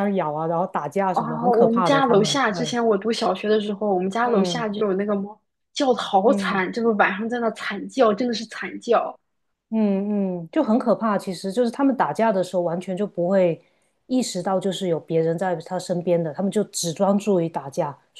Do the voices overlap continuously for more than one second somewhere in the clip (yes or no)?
yes